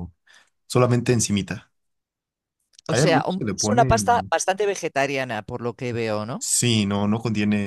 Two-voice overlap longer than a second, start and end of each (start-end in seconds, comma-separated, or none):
2.9-4.3